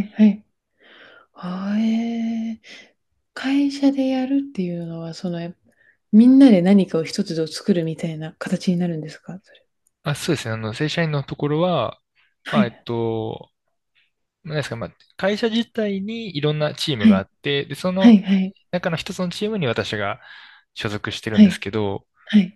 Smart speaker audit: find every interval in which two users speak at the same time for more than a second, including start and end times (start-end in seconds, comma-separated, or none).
none